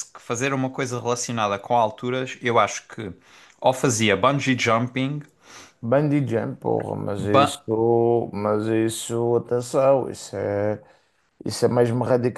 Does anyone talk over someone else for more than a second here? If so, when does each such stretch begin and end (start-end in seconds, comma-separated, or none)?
none